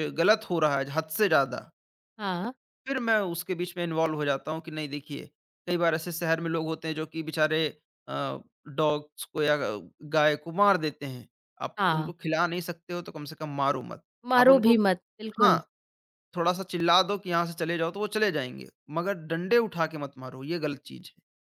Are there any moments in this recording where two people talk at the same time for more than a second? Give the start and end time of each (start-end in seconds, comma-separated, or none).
none